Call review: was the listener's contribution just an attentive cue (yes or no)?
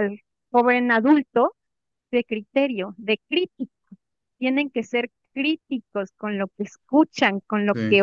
yes